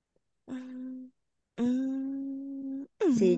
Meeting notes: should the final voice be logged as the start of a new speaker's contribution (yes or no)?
yes